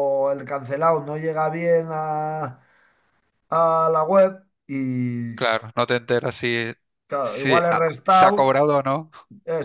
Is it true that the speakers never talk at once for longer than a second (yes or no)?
no